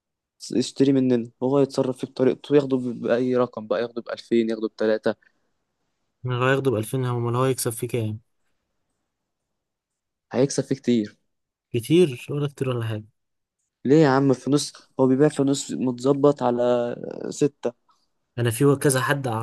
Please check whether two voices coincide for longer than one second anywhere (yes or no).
no